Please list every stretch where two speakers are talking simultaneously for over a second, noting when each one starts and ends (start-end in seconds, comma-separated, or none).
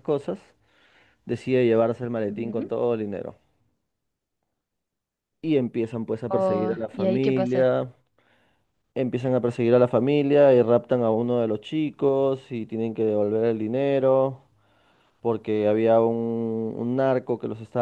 6.3-7.7